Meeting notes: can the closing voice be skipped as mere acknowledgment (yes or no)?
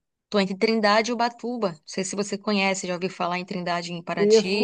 no